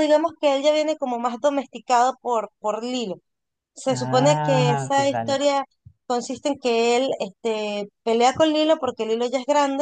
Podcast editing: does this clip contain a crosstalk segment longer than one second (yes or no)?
yes